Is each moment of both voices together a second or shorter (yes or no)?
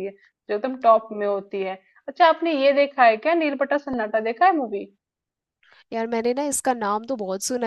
yes